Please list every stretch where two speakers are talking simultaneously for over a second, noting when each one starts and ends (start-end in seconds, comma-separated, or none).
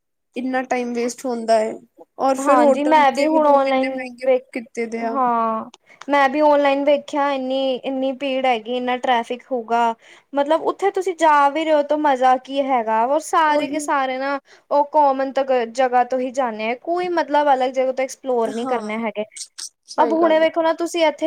2.4-4.4